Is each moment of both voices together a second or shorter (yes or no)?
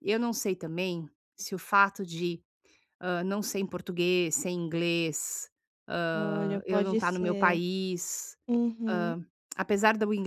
no